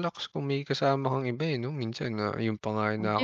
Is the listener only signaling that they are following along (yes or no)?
no